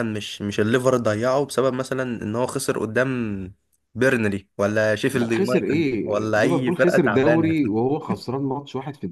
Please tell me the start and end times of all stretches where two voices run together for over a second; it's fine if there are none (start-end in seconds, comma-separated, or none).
5.1-7.5